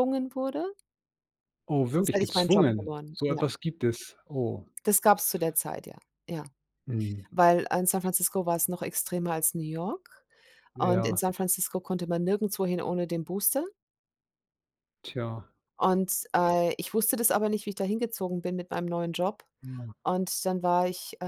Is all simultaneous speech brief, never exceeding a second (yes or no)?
no